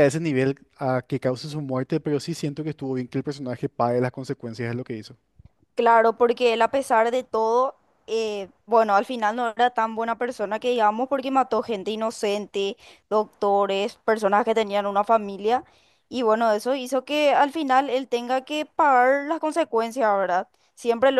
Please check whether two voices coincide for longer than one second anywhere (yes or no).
no